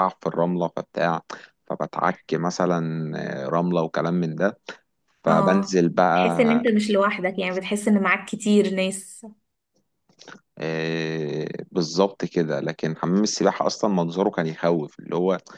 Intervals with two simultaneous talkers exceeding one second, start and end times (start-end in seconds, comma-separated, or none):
5.3-6.7